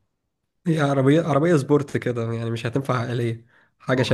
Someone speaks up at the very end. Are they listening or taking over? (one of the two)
taking over